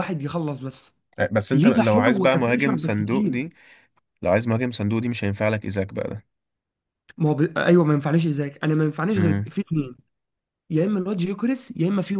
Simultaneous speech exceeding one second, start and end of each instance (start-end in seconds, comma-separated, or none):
1.5-3.4